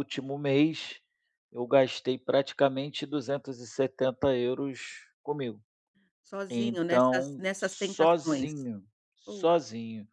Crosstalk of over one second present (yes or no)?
yes